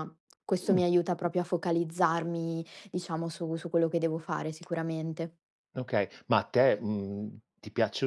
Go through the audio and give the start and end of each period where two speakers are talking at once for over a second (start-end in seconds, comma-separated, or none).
none